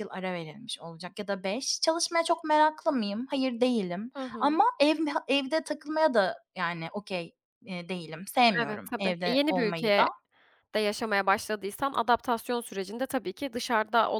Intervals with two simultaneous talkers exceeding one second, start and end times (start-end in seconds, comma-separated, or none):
8.6-10.1